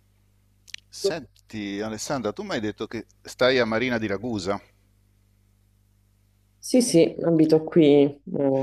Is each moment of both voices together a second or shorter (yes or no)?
yes